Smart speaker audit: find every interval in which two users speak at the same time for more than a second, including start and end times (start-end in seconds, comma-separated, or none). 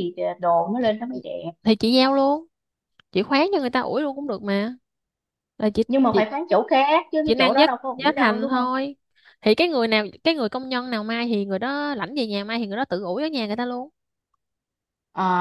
7.2-8.7